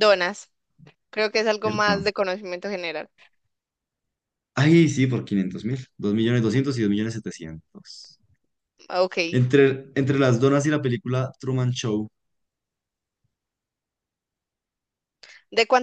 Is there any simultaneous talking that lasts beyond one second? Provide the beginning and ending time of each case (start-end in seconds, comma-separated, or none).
none